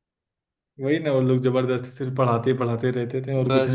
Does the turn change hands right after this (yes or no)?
yes